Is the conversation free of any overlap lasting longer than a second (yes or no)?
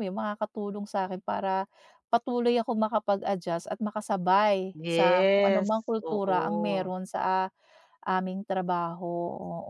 no